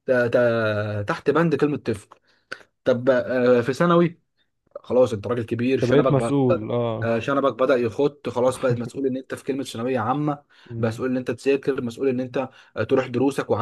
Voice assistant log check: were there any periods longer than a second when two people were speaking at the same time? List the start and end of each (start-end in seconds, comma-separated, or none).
none